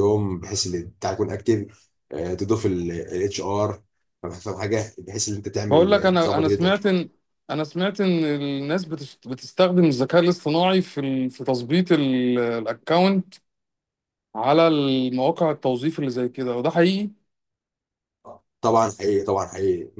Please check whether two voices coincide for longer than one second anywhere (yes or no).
yes